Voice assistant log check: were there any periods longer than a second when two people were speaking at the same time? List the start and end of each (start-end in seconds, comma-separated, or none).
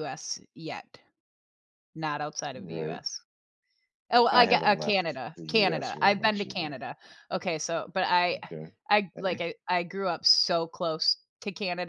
4.3-6.8